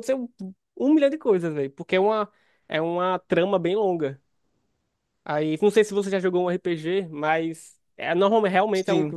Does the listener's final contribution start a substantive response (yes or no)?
no